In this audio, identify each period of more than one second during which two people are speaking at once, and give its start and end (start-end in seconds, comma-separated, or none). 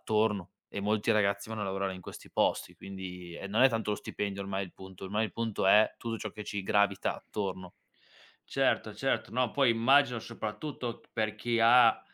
none